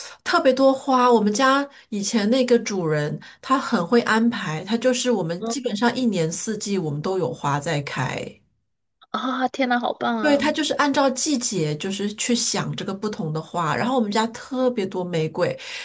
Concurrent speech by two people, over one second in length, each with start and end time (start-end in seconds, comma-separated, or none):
none